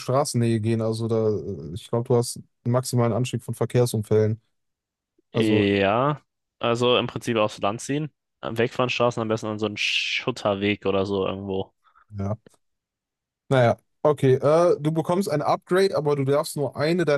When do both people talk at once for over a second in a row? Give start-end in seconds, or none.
none